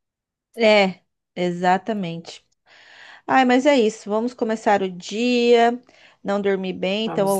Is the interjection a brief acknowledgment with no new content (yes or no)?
yes